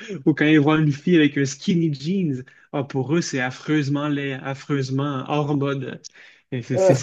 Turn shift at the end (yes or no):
no